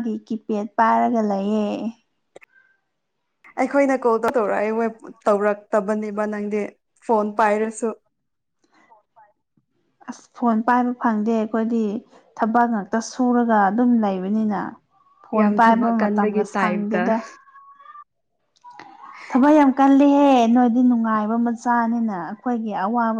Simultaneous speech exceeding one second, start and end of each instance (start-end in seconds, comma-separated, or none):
15.3-17.1